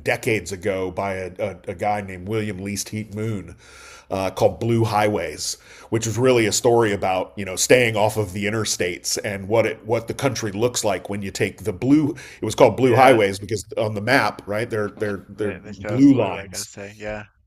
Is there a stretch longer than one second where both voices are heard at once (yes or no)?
yes